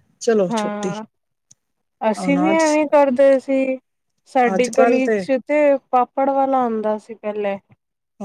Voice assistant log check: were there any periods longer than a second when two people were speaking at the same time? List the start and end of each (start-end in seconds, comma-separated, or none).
none